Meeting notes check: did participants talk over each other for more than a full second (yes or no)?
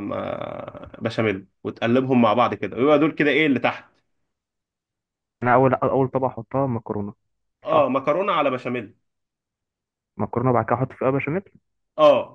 no